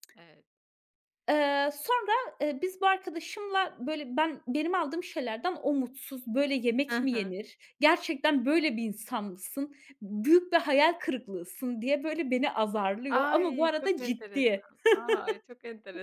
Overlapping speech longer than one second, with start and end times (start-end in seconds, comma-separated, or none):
13.1-14.6